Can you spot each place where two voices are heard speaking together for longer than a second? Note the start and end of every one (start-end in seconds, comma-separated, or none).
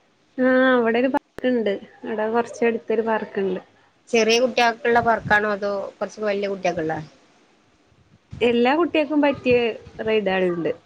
none